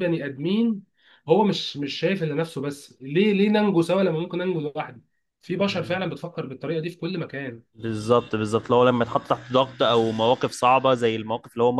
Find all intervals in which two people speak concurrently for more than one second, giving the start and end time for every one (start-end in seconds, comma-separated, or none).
none